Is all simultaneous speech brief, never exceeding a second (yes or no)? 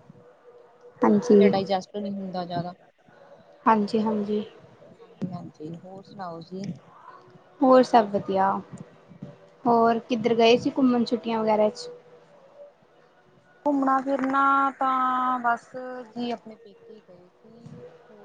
yes